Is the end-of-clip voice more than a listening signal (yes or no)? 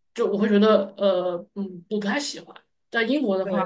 no